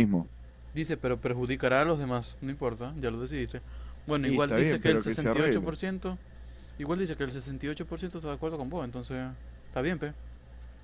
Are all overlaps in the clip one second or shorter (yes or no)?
no